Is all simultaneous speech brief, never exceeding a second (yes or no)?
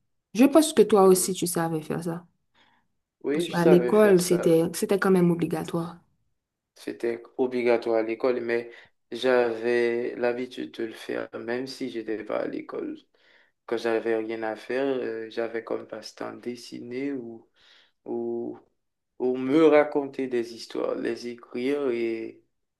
no